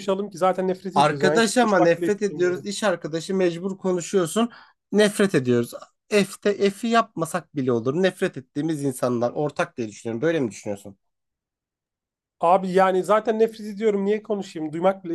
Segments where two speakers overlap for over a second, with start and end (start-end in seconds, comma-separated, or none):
0.9-2.7